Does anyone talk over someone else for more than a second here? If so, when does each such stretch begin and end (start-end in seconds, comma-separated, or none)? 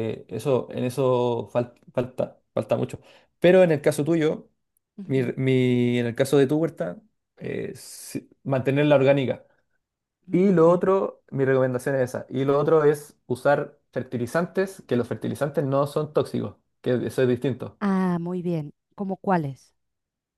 none